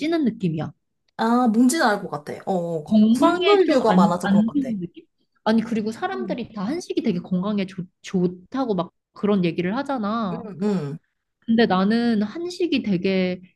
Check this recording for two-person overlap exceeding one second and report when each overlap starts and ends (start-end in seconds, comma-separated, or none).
2.8-4.8